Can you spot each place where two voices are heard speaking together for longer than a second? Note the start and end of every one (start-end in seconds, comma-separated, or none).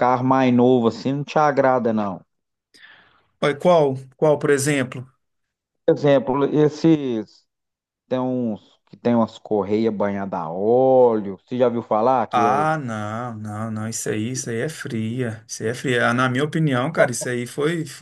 none